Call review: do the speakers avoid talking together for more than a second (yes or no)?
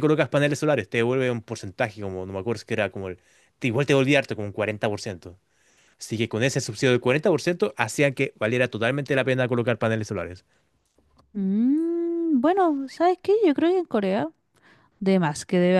yes